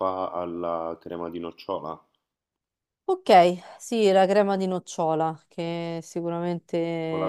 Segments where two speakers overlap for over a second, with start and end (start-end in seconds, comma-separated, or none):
none